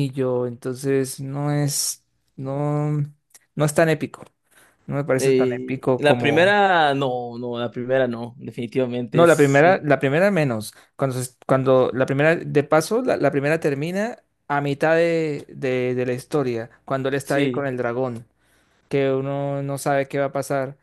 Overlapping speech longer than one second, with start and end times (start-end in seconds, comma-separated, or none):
5.2-6.6